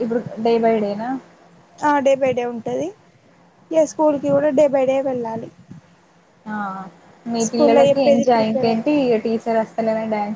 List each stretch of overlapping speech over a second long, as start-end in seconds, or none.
7.5-9.1